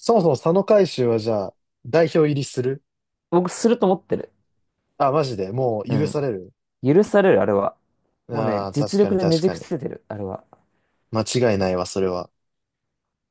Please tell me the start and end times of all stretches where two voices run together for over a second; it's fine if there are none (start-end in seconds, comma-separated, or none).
8.3-9.7